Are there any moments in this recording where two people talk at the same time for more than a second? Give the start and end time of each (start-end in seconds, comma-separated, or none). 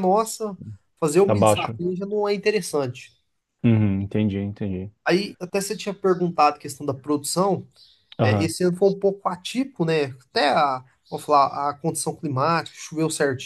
none